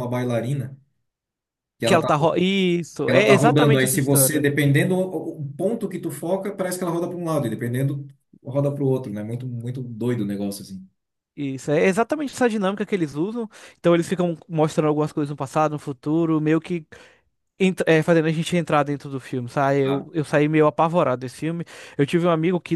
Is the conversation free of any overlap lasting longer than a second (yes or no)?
no